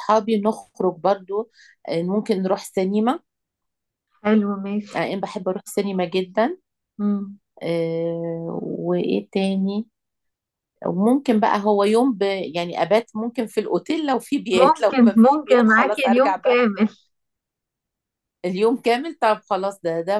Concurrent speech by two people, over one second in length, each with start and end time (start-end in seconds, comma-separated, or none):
14.5-16.6